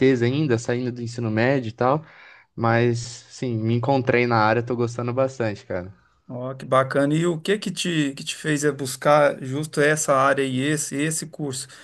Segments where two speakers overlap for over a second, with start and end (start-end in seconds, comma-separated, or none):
none